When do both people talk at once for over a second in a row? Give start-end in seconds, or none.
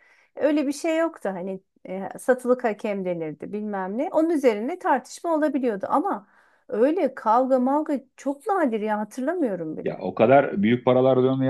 none